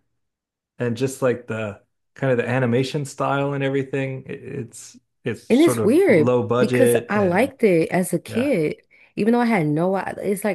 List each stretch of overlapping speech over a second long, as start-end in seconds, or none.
5.5-7.5